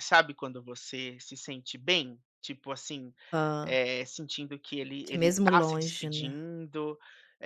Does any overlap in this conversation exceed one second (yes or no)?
yes